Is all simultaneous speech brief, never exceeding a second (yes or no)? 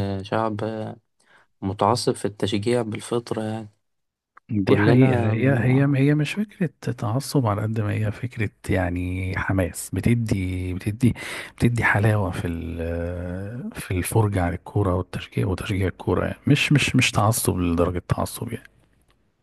no